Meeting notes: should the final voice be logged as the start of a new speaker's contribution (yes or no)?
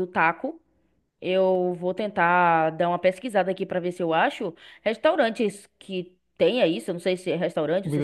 no